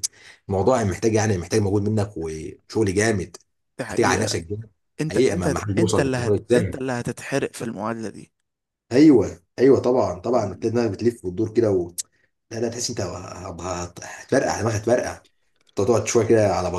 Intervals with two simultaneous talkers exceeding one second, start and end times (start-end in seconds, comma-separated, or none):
5.1-6.8